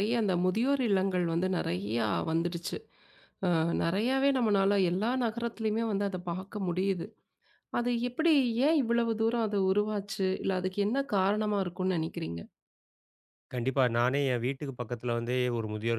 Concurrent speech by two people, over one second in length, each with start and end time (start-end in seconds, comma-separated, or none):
none